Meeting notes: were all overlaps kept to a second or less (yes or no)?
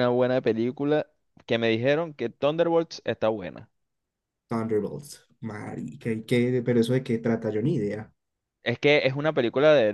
yes